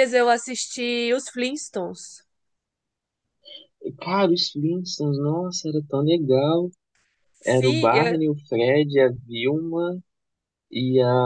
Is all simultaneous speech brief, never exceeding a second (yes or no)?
yes